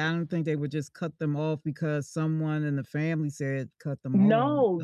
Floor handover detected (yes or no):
yes